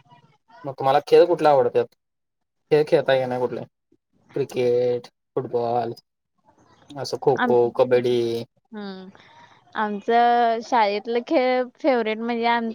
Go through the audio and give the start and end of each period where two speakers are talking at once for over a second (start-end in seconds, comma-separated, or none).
none